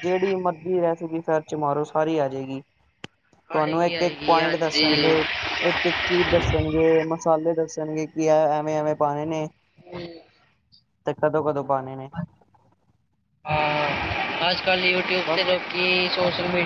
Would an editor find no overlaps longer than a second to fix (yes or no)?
no